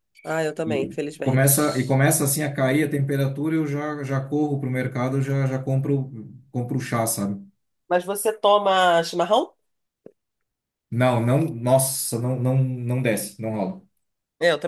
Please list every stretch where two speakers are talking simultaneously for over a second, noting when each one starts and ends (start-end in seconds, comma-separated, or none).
0.7-2.0